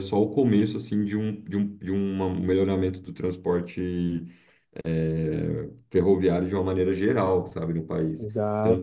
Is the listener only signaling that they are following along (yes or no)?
yes